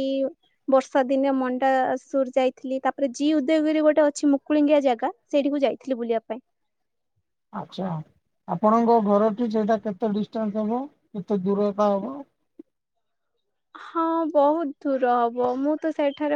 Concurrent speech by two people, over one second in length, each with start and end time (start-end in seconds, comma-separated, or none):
none